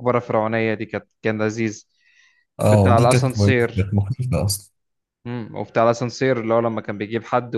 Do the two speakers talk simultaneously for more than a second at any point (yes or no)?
yes